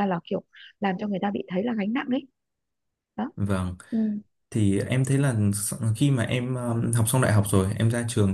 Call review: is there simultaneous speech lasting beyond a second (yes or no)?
no